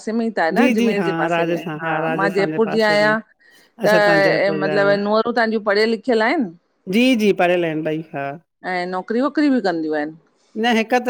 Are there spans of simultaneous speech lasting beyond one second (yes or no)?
yes